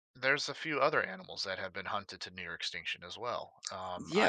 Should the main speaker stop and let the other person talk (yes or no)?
yes